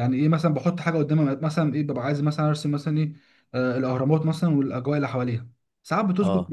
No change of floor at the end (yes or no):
yes